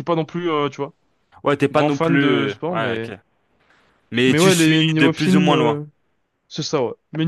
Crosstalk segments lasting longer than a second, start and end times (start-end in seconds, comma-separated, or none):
1.7-3.1, 4.2-5.8